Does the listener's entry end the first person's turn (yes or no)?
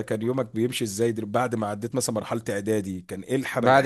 no